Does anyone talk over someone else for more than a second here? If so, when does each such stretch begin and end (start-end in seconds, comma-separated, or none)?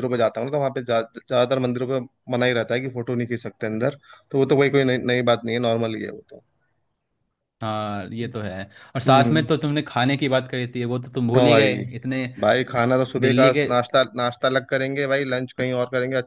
none